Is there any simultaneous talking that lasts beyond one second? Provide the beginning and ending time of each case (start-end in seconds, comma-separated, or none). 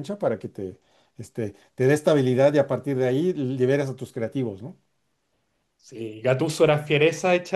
none